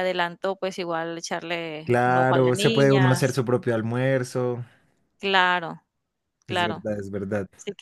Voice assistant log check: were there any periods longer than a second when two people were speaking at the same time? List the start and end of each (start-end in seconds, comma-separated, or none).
1.8-3.4